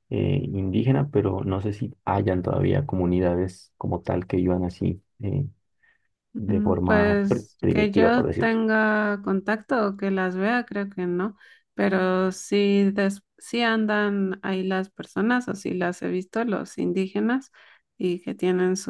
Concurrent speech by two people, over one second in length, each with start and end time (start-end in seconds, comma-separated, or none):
6.5-8.6